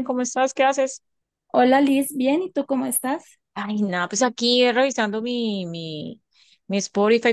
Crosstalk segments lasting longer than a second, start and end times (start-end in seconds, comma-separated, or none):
none